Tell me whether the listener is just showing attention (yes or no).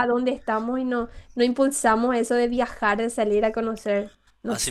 no